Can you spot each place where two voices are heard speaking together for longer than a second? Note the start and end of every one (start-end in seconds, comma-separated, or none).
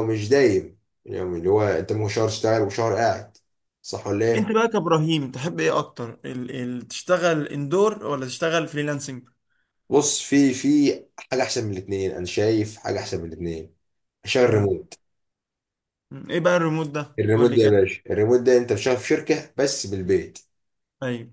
none